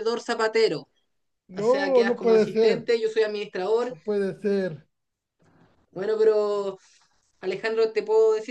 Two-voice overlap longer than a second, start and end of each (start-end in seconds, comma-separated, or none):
1.5-2.9